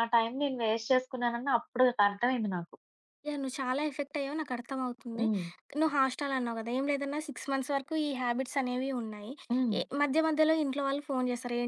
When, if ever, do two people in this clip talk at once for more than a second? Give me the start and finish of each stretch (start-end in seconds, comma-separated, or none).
none